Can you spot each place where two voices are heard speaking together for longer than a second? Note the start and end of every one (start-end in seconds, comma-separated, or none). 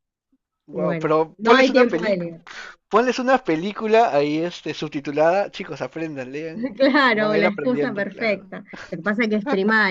0.8-2.2, 7.1-8.5